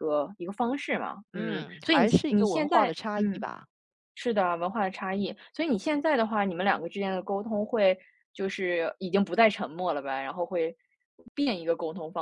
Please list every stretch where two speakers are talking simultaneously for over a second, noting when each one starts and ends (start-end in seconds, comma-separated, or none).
1.3-3.5